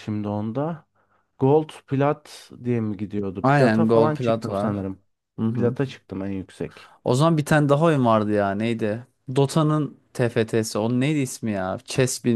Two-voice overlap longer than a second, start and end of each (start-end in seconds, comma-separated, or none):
3.4-4.8